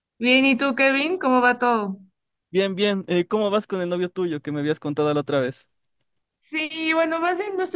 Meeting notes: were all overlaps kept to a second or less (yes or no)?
yes